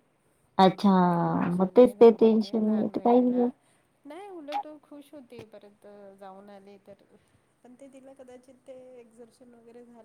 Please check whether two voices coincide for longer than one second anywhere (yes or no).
yes